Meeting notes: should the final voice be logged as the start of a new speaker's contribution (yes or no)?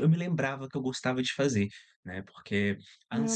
yes